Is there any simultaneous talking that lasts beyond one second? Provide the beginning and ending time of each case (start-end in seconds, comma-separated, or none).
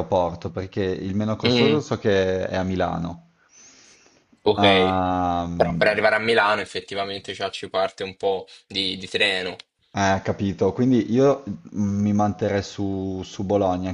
none